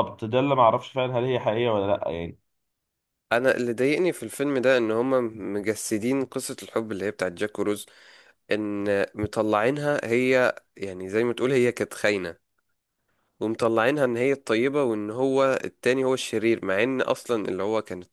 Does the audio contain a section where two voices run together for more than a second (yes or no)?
no